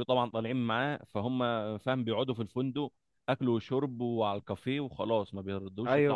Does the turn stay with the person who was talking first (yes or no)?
no